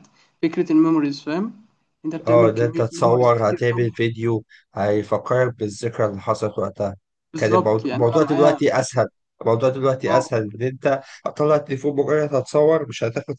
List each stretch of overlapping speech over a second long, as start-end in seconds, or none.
2.3-3.9, 7.3-8.6